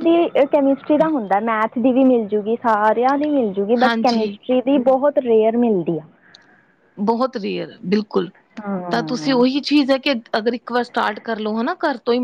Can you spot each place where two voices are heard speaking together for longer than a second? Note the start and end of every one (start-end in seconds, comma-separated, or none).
none